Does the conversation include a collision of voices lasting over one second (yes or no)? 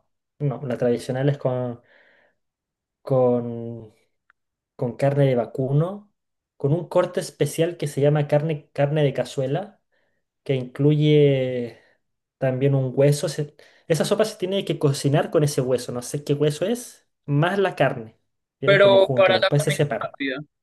yes